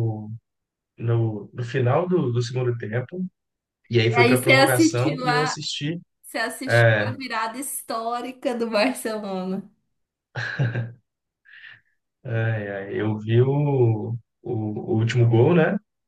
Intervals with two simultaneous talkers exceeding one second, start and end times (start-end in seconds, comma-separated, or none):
4.1-5.6